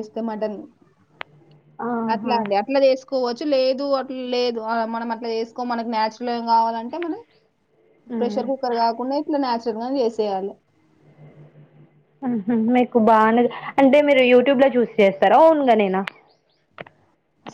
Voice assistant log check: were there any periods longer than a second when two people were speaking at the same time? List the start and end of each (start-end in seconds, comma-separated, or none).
none